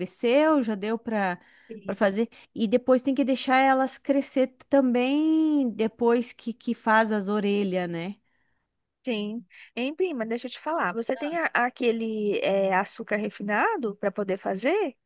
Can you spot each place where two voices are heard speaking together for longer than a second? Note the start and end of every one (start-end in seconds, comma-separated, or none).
none